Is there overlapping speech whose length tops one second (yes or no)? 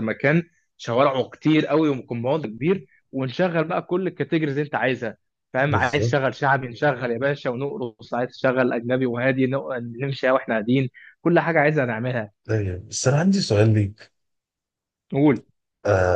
no